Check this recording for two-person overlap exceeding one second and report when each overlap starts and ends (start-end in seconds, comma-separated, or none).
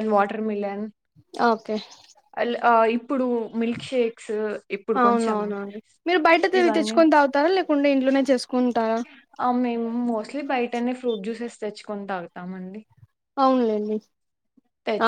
none